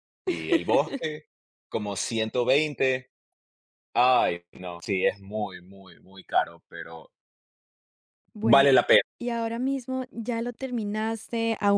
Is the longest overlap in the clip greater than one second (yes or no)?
no